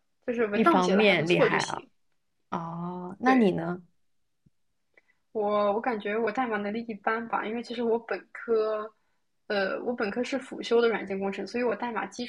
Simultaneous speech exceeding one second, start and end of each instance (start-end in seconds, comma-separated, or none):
0.5-1.9